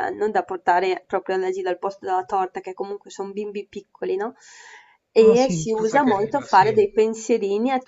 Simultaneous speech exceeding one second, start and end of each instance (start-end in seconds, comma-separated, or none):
5.2-6.7